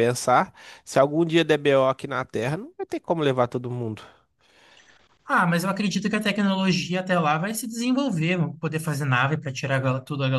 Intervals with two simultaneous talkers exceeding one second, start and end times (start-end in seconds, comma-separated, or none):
none